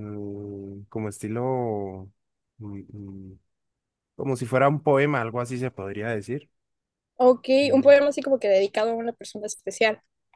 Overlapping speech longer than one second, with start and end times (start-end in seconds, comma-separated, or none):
none